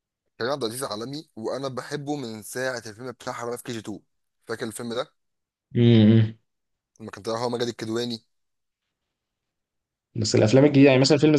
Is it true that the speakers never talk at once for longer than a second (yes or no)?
yes